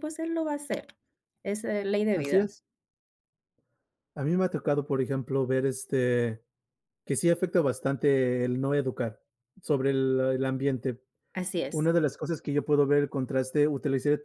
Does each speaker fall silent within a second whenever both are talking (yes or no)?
yes